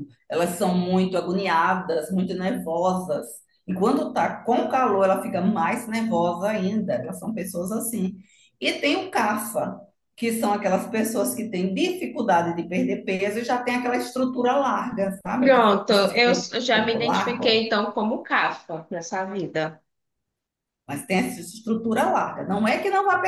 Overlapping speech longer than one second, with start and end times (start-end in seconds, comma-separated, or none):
15.4-17.6